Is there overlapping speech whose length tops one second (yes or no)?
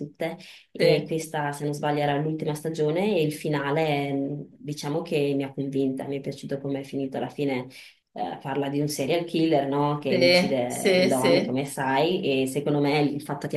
yes